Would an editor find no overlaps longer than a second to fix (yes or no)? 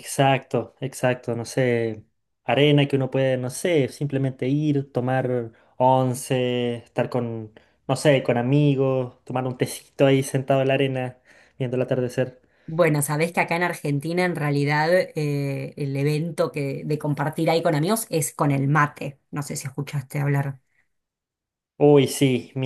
yes